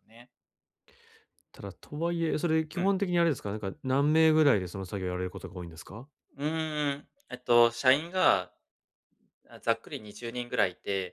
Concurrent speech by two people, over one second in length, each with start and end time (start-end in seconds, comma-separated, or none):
none